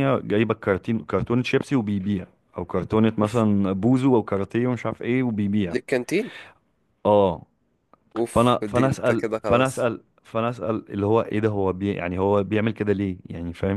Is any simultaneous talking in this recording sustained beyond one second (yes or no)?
yes